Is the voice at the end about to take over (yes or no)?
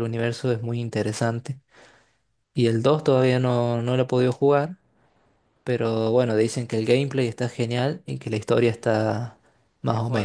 yes